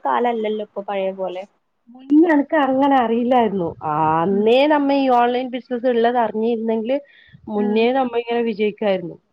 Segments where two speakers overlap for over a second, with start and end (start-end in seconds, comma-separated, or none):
none